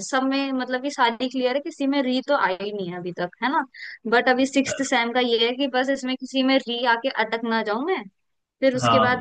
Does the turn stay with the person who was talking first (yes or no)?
yes